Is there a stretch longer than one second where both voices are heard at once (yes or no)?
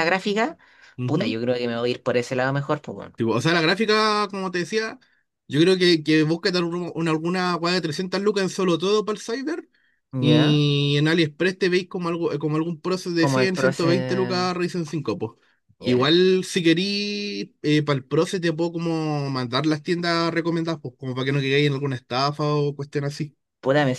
yes